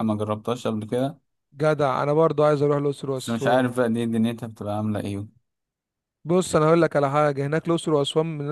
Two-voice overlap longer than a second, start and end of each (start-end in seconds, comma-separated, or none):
none